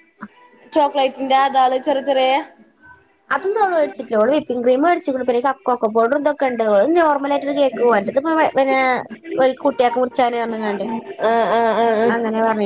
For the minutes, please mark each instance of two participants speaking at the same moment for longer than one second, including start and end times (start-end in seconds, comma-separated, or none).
none